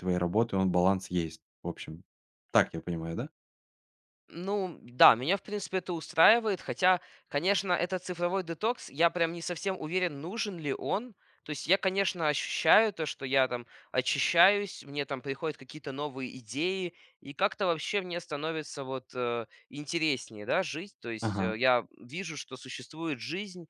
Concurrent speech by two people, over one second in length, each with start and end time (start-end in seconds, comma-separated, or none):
none